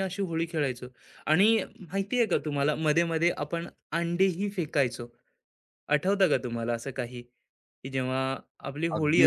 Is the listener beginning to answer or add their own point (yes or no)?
yes